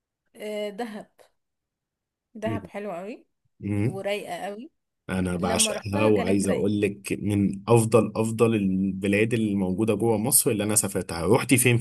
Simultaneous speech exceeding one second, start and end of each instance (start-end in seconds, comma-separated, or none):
5.3-6.7